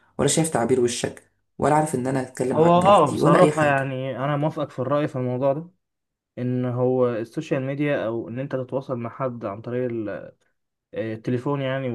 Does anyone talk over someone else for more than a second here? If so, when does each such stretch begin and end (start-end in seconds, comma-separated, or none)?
2.5-3.8